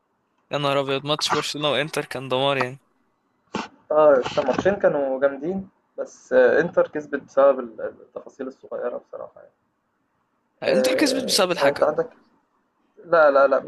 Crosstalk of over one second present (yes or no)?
yes